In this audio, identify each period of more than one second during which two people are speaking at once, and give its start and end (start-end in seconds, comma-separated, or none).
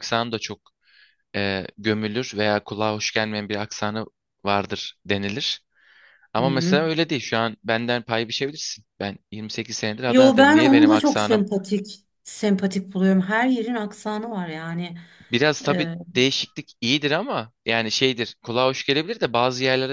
10.1-11.5